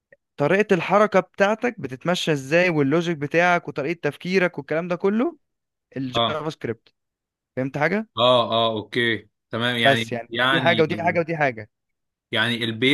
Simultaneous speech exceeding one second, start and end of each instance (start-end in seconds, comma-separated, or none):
9.8-11.2